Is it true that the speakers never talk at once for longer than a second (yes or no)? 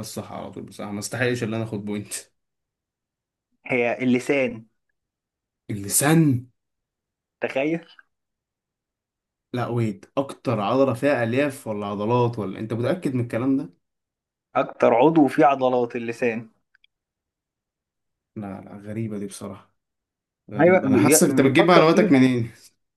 no